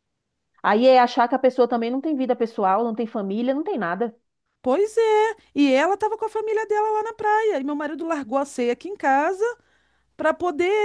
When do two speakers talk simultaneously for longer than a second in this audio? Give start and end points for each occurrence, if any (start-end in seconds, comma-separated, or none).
none